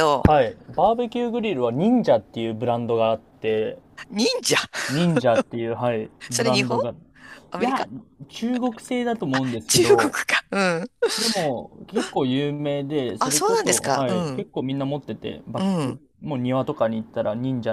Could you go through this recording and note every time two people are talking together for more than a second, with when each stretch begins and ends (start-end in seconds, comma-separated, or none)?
13.2-14.5